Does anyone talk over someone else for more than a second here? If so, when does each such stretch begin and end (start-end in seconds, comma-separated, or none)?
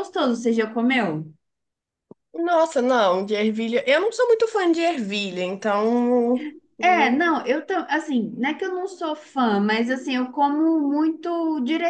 none